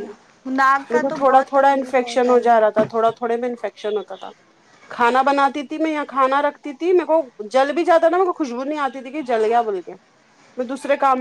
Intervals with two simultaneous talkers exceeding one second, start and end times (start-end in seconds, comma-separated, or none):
0.9-2.7